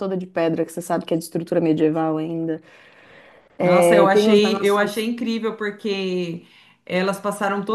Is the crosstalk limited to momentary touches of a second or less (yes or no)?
no